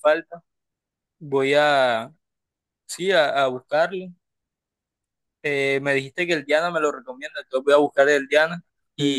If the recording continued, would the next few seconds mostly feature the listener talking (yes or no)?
no